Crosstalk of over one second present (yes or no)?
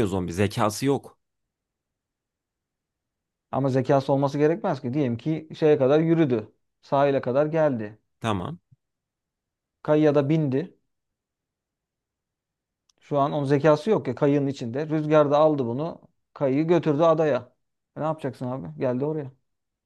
no